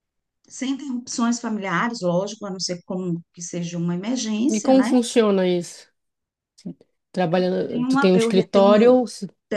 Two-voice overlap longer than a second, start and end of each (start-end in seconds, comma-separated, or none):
7.7-9.0